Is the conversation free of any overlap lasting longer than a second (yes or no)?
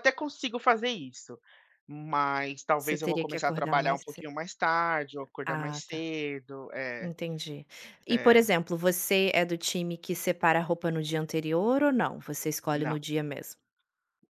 no